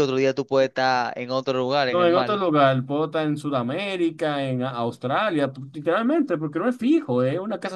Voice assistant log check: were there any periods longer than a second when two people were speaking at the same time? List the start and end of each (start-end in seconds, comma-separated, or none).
none